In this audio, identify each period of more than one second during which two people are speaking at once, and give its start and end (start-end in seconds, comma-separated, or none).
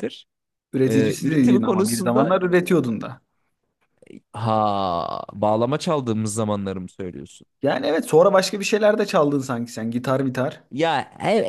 0.8-2.4